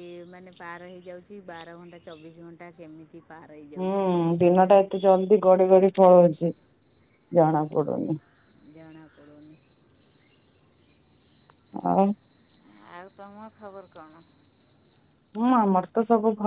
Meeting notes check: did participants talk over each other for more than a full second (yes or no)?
no